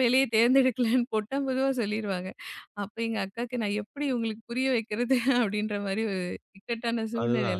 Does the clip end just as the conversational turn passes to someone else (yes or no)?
yes